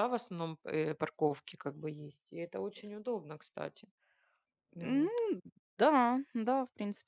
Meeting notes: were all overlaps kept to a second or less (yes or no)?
yes